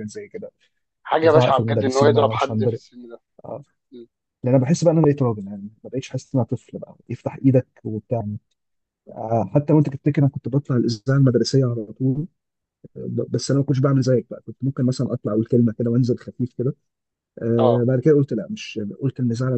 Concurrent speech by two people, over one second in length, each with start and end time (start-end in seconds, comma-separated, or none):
1.1-2.8